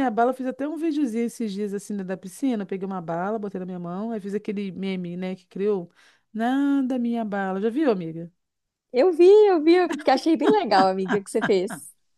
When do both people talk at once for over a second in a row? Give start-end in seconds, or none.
none